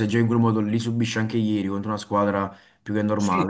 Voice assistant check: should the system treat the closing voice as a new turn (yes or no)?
yes